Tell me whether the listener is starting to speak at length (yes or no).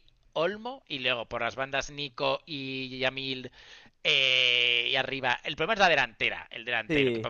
no